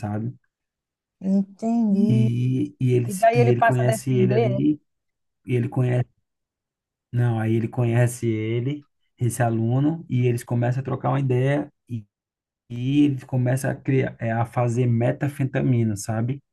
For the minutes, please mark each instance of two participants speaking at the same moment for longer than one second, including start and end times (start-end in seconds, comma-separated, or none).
3.0-4.6